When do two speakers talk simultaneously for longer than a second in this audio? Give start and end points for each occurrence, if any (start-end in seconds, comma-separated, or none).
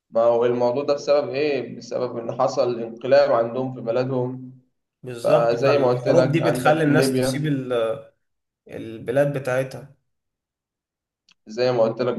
5.2-7.5